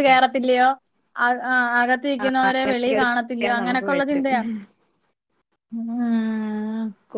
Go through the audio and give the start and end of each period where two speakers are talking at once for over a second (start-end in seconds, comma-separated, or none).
2.2-4.4